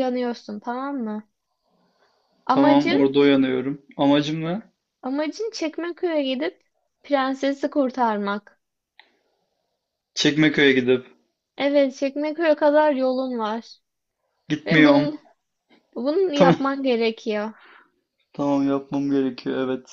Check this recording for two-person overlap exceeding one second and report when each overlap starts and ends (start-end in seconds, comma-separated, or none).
none